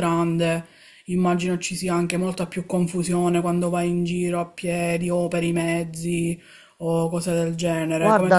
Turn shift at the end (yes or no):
yes